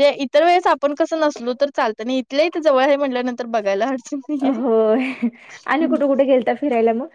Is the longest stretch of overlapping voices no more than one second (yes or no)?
yes